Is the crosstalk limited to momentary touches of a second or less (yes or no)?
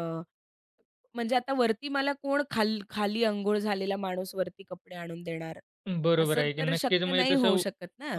no